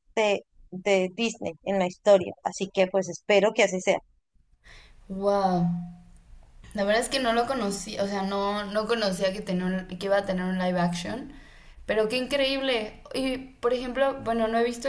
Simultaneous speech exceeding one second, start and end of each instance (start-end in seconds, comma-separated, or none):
none